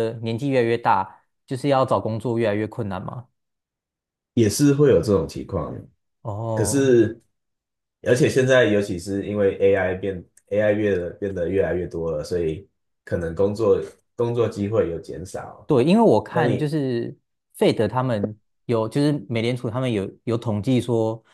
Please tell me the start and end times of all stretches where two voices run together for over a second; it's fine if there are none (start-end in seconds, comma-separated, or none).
none